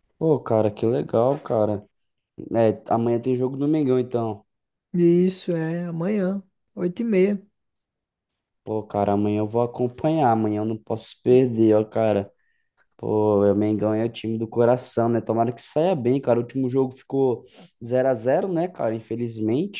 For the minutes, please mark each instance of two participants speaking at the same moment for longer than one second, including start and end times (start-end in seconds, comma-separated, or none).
none